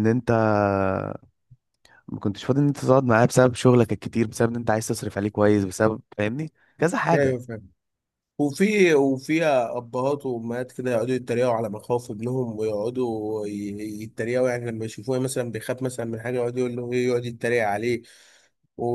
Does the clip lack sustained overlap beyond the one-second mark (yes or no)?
yes